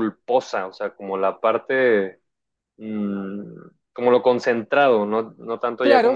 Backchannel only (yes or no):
no